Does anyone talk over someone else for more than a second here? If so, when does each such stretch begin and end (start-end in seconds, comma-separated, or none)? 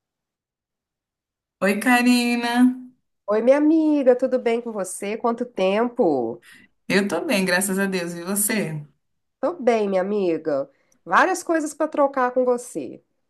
none